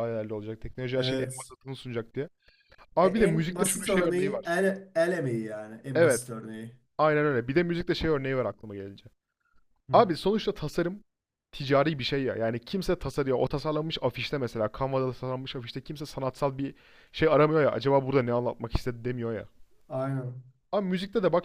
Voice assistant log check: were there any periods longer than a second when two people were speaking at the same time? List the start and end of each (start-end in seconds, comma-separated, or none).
3.0-4.6